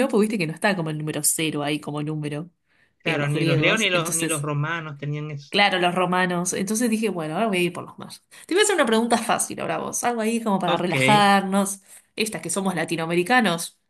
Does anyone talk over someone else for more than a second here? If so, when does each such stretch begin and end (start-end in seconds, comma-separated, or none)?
3.0-4.5